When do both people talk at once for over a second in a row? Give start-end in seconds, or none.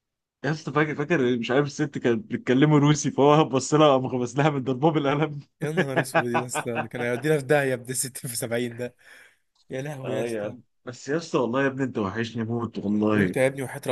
none